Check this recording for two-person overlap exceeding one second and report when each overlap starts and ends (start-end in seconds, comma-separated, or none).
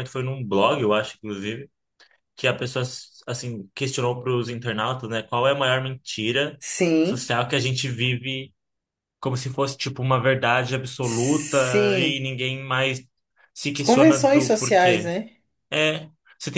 11.0-12.2, 13.8-15.1